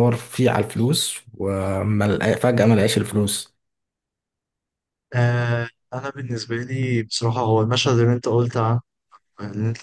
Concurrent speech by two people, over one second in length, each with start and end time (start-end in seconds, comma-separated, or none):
none